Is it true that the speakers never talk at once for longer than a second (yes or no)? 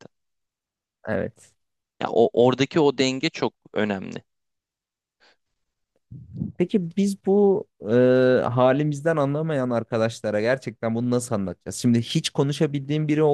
yes